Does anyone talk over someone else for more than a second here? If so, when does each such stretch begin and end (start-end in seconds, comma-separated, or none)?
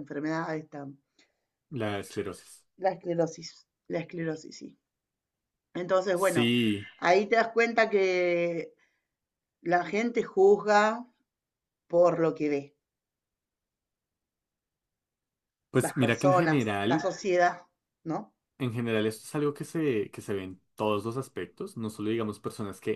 15.8-17.1